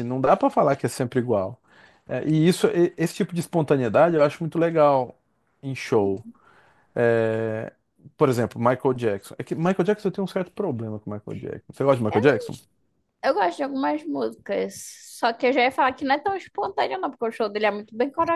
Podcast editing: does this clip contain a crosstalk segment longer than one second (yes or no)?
no